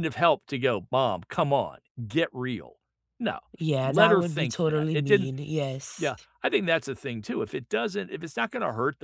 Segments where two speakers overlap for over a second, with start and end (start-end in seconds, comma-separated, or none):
3.8-5.3